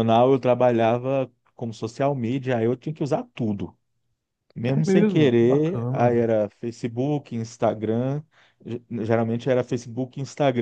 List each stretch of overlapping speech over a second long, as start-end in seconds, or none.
4.7-6.2